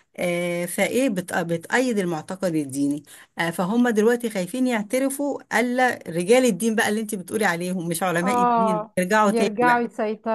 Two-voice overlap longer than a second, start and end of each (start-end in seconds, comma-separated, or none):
8.2-9.8